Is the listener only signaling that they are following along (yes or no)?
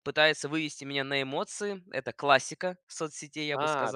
no